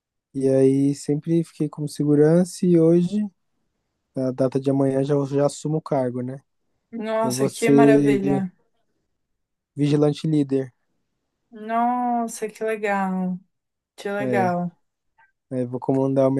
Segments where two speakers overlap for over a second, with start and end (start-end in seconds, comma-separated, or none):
7.2-8.5